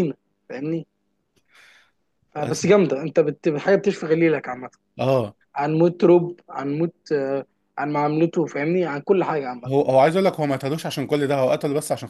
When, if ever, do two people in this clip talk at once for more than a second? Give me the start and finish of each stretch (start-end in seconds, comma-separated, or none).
none